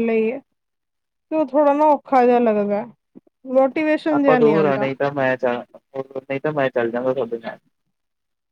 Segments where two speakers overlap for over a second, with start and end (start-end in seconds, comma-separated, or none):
none